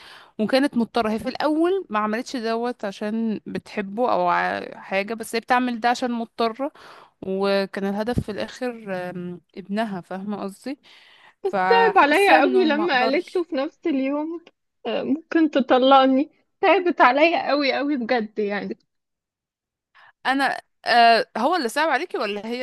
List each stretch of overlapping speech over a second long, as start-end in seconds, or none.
11.5-13.4